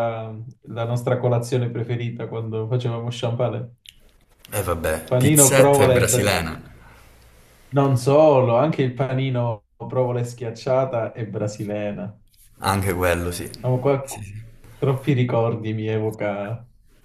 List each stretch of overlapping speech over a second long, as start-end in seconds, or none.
5.1-6.5